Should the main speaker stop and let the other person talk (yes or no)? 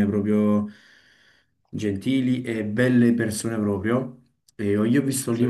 no